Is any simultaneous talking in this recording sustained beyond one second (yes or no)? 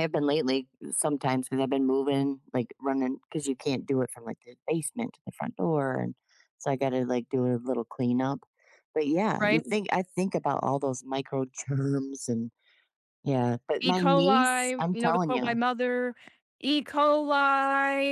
yes